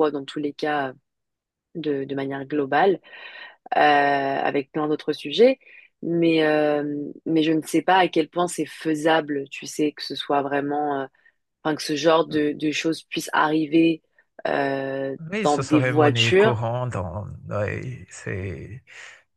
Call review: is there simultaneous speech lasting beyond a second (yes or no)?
yes